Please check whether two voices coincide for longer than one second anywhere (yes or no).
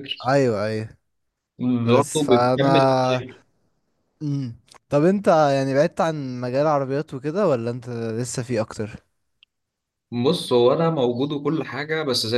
yes